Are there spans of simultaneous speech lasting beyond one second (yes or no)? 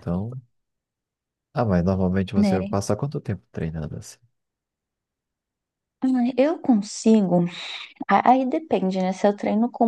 no